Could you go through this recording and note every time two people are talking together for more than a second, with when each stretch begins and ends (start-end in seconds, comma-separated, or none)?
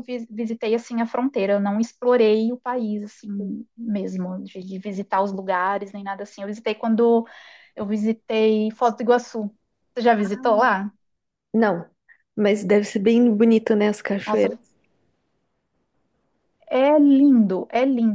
none